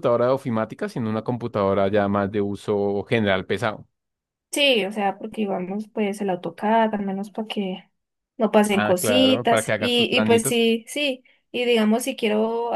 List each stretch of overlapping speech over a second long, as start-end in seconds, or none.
8.7-10.6